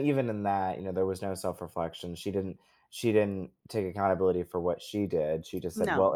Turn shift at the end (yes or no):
no